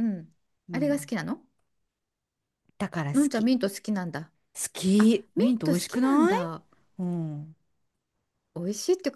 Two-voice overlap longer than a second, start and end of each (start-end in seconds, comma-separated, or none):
5.0-6.5